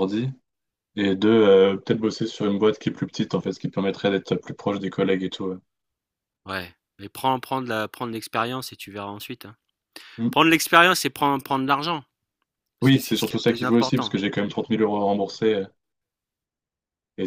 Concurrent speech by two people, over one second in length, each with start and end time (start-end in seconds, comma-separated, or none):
12.8-14.1